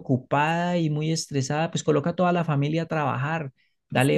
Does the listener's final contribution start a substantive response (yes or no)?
no